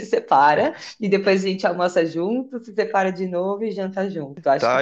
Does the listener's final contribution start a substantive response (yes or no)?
yes